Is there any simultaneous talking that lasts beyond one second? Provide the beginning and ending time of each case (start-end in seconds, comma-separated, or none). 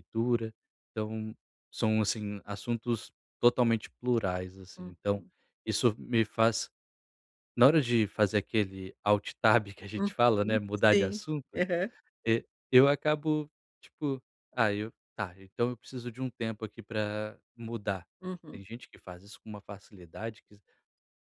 9.9-11.6